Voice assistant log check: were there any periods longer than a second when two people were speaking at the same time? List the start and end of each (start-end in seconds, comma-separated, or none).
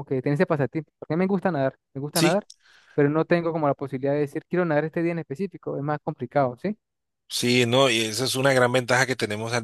none